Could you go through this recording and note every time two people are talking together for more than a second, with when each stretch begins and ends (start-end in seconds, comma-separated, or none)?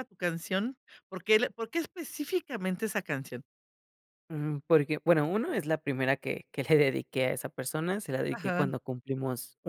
none